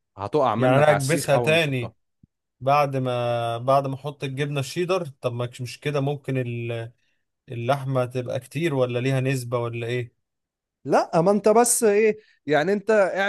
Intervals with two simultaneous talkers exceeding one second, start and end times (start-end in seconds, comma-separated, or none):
0.6-1.9